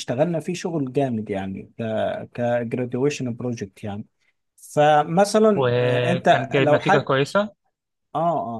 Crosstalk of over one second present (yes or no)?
yes